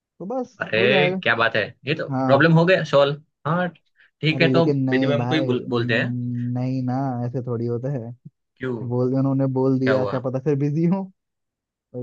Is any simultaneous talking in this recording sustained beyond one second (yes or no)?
yes